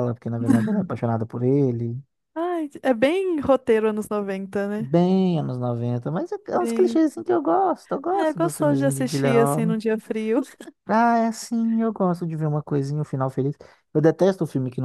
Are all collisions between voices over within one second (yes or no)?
no